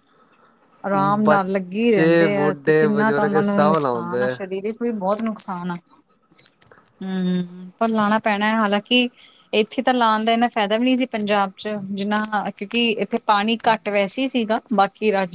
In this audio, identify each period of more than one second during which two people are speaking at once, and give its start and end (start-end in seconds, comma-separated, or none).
1.2-4.3